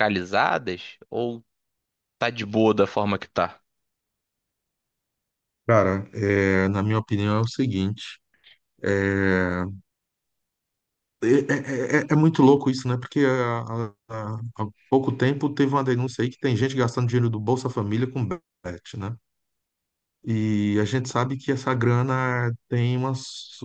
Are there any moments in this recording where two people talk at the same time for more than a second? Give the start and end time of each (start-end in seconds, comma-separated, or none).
none